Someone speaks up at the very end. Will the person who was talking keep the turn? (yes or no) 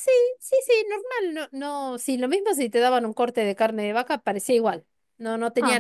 yes